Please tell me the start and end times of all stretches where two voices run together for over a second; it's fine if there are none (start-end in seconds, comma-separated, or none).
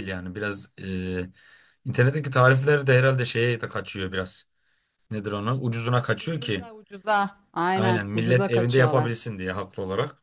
7.7-9.1